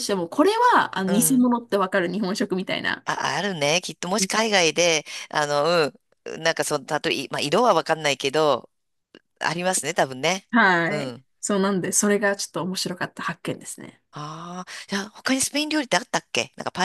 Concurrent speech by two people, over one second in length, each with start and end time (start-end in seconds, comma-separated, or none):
none